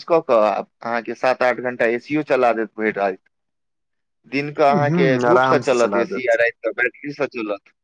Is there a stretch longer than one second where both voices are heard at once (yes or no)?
yes